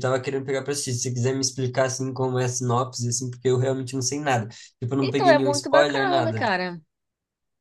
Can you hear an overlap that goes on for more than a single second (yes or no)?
yes